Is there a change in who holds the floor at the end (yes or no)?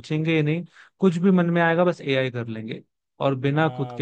yes